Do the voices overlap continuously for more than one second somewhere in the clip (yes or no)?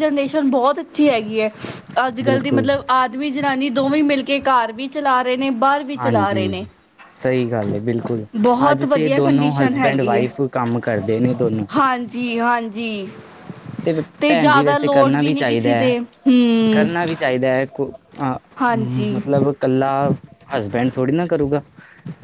yes